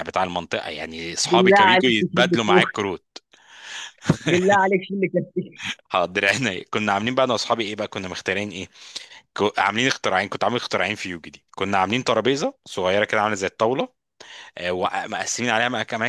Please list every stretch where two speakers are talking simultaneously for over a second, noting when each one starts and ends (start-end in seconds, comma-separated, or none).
1.2-2.7